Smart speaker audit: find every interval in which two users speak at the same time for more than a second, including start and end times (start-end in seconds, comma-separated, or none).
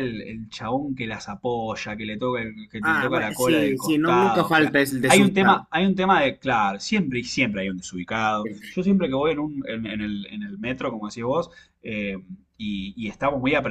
2.8-5.6